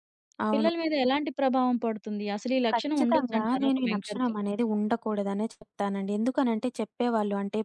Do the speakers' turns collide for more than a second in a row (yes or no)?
yes